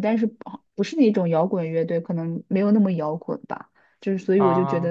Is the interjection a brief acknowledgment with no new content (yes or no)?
yes